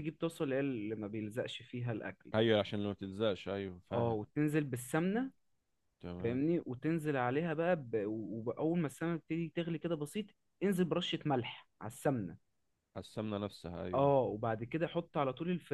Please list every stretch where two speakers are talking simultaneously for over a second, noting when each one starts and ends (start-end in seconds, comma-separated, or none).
none